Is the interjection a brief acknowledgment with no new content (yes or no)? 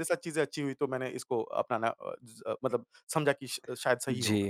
no